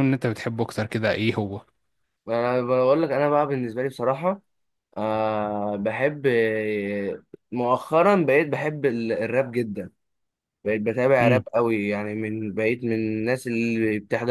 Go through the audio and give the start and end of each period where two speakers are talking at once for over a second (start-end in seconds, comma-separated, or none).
none